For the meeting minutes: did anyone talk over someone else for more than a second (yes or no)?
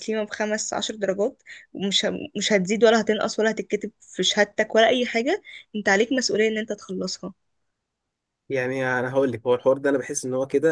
no